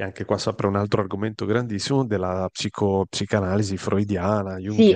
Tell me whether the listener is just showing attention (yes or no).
no